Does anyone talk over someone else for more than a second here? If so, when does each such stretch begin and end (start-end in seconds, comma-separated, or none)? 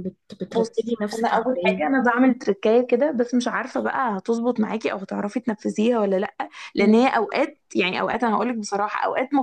0.6-1.9